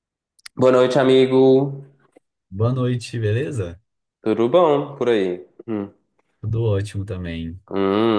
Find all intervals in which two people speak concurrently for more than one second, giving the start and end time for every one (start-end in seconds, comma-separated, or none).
none